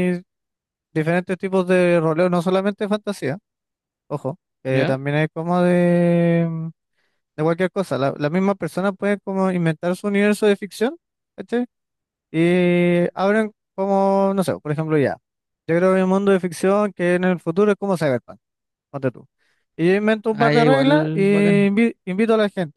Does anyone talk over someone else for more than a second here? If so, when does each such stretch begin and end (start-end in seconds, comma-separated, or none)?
20.3-21.7